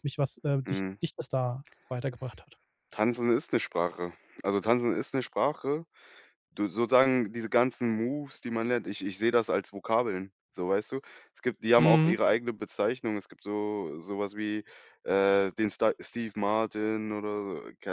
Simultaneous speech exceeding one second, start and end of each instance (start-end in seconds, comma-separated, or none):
none